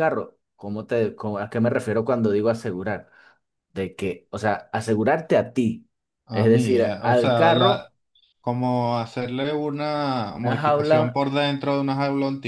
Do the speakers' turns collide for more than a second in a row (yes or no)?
yes